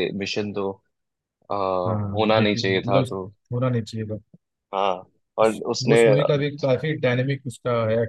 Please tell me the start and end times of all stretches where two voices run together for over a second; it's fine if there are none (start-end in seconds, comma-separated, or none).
1.9-3.1